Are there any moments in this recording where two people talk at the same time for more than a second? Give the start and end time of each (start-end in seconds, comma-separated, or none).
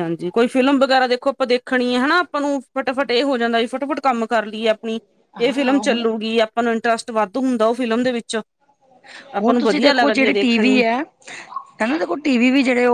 9.4-10.8